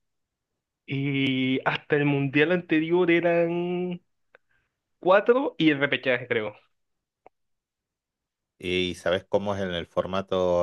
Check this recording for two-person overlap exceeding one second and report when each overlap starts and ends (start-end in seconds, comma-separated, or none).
none